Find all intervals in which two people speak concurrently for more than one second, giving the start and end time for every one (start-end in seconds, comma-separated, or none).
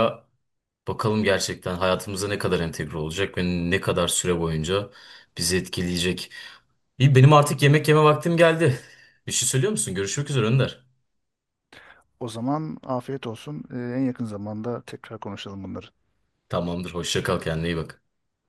none